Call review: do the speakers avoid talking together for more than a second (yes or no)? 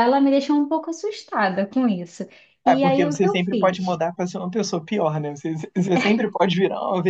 no